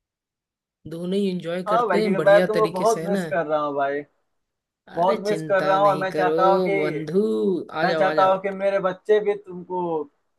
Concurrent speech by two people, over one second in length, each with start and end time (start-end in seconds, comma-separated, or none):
1.7-3.2, 5.0-6.3